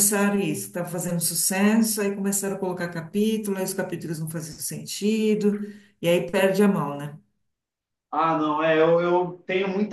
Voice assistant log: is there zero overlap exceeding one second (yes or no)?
yes